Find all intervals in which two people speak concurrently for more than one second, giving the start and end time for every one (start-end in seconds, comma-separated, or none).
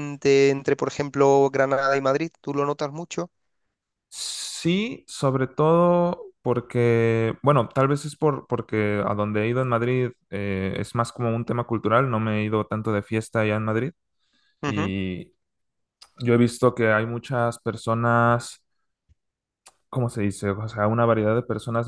none